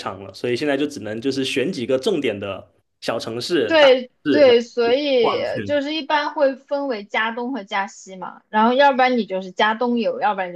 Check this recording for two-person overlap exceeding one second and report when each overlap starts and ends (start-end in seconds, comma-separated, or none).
3.7-5.7